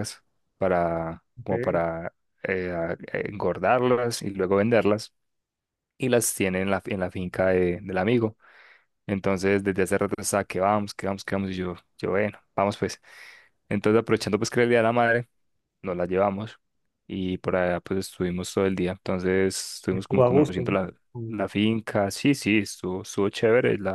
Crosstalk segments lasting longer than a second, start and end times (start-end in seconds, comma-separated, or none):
19.9-21.4